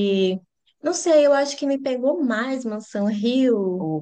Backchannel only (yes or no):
yes